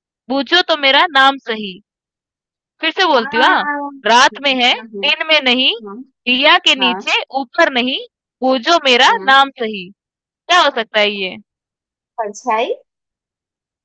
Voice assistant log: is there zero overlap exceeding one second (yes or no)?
yes